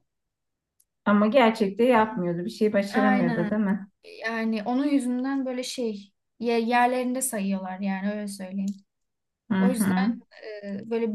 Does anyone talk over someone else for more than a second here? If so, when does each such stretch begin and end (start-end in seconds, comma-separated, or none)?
none